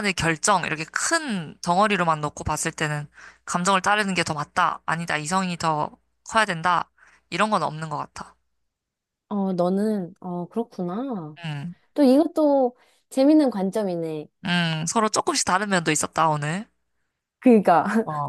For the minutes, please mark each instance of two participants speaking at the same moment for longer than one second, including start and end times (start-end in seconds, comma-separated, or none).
none